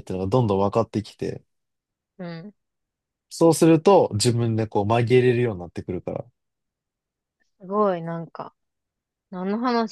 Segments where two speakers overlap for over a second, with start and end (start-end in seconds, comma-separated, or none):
none